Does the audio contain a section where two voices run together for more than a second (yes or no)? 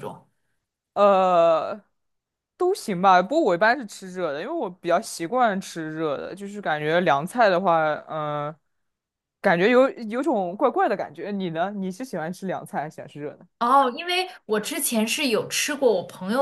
no